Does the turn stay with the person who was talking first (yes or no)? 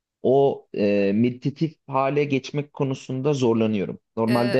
no